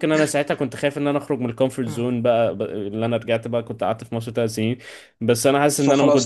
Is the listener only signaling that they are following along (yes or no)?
yes